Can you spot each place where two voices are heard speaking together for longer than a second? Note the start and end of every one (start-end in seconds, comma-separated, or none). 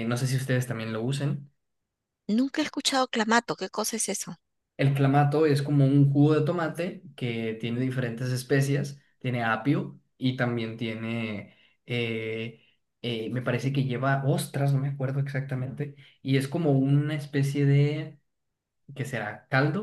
none